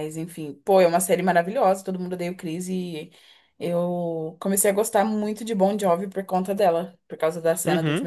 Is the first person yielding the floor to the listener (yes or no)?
yes